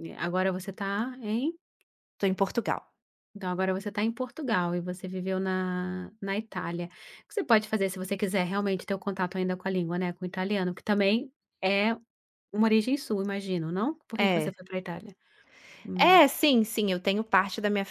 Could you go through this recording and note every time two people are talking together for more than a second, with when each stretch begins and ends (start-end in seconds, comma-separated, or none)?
none